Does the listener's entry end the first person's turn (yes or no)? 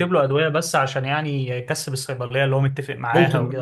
yes